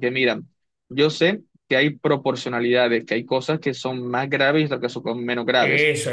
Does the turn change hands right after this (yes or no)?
yes